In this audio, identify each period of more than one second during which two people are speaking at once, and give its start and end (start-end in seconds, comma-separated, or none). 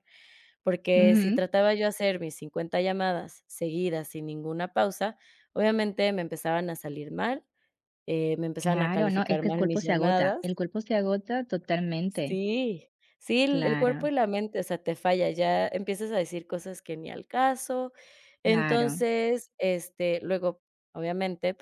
8.6-10.6